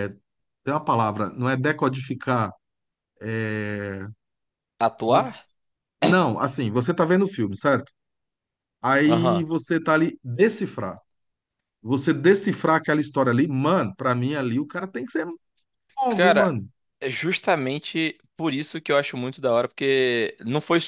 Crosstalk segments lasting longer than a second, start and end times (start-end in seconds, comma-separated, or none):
none